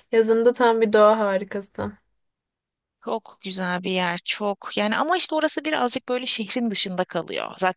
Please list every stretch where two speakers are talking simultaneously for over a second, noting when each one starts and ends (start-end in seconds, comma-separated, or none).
none